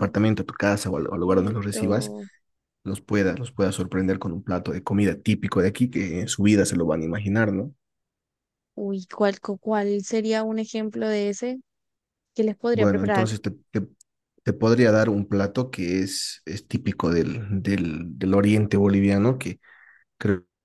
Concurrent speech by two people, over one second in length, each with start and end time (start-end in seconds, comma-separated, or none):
0.9-2.1